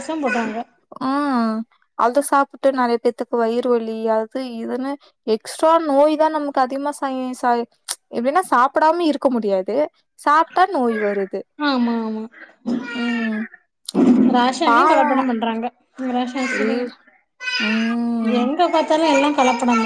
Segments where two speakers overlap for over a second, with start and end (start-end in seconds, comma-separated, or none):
none